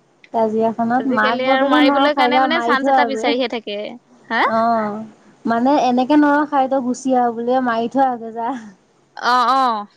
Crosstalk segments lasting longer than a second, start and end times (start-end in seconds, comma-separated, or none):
1.0-3.2